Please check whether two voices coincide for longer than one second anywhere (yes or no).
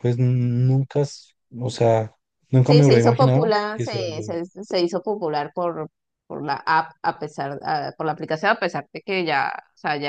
yes